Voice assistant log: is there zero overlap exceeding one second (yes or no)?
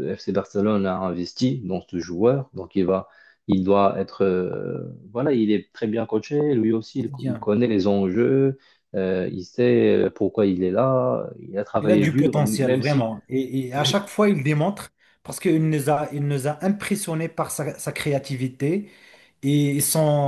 no